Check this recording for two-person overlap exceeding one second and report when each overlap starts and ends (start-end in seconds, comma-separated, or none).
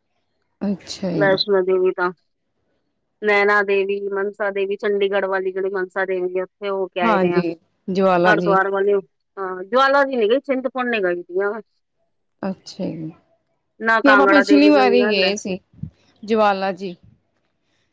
14.0-15.3